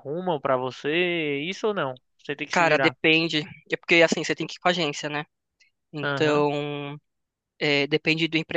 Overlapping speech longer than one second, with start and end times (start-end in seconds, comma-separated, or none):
none